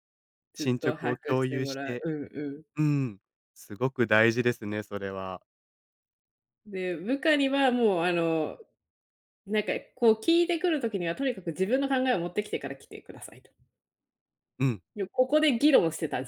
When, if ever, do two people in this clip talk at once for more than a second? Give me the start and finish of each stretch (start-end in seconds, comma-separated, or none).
0.6-2.1